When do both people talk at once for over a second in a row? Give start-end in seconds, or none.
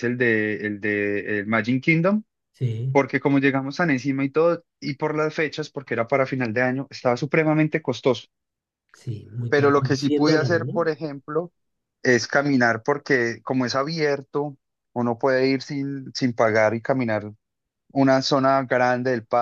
9.5-10.8